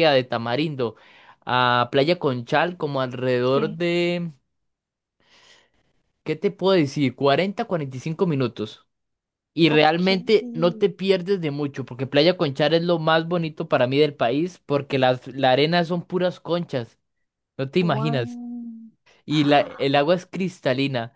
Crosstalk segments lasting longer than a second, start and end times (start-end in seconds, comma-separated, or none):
none